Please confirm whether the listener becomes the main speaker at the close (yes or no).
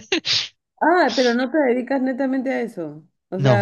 no